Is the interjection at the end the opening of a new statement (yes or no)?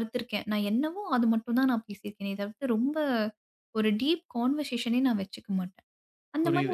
yes